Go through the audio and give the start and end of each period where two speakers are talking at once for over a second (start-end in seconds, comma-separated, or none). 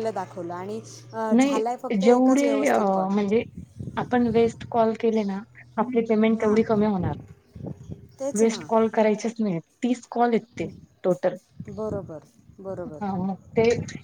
1.4-3.1